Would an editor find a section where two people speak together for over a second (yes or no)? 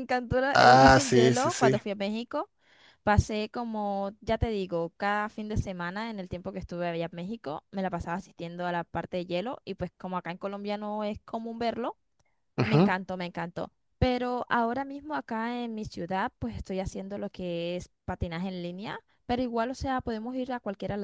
yes